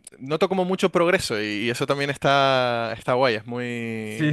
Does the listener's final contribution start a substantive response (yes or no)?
yes